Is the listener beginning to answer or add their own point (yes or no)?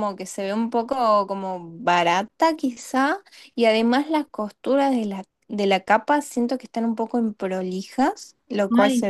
yes